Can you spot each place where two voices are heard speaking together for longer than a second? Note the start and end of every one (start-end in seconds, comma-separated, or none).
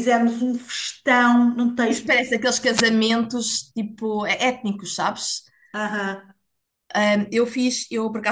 none